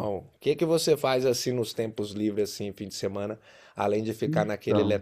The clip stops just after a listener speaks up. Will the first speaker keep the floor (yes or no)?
yes